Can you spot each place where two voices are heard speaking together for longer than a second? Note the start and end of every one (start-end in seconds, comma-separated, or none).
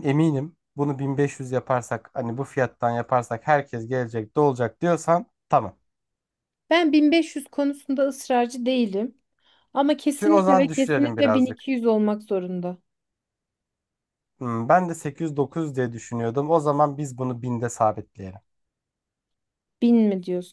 10.2-11.7